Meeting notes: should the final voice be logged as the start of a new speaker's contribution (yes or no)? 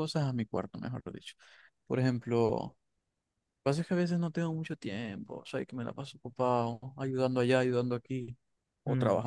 no